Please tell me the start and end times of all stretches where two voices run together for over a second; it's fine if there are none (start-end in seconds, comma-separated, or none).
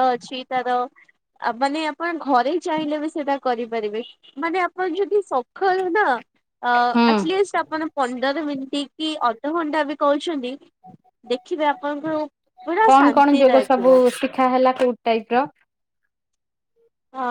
none